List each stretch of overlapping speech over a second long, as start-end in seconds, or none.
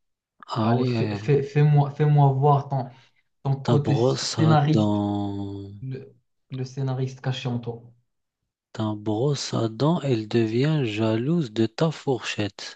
3.6-5.0